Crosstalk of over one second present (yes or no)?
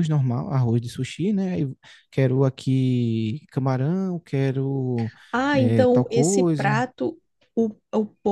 yes